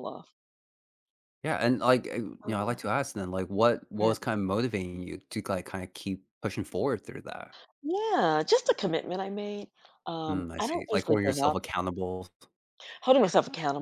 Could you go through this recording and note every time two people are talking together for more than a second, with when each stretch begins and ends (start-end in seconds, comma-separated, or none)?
10.3-11.6